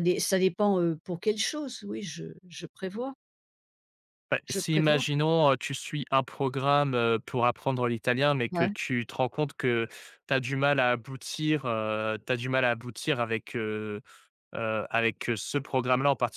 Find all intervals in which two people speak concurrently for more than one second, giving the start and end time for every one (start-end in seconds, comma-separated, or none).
none